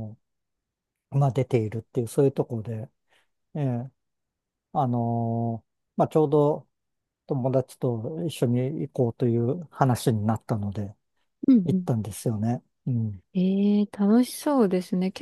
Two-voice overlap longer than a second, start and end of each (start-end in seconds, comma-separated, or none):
none